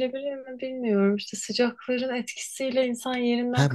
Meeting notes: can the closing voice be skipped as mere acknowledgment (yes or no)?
no